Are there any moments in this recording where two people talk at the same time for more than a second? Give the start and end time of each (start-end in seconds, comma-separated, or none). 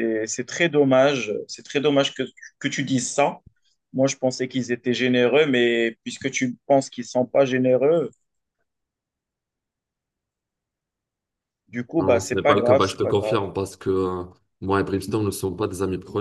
12.0-13.4